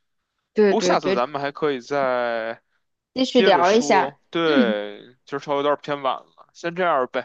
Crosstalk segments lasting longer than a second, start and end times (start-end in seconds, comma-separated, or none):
3.3-4.8